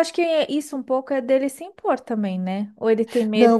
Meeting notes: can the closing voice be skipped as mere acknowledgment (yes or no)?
no